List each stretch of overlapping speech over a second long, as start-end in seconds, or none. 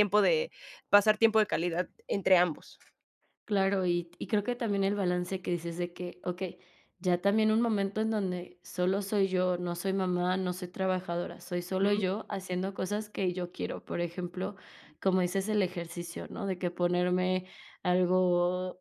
none